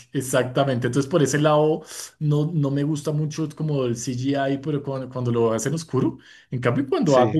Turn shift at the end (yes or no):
no